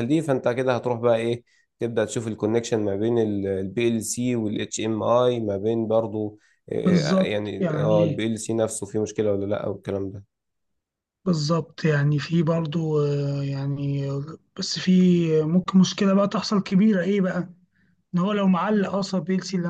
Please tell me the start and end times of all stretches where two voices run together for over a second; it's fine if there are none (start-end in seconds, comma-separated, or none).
6.8-8.2